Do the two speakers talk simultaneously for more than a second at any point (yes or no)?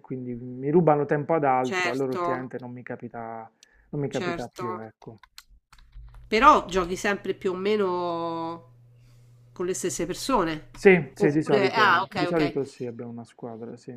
yes